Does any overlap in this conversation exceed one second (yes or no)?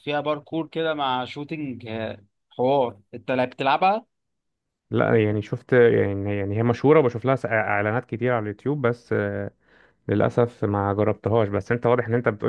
no